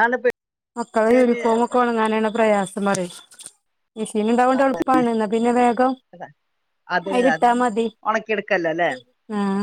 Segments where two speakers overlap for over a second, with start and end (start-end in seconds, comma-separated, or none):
none